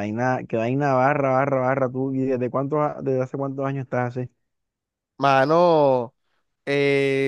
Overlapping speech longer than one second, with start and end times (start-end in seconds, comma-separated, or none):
none